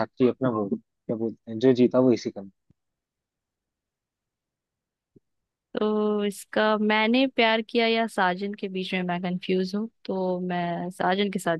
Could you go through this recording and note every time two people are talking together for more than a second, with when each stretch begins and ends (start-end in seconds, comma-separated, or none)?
none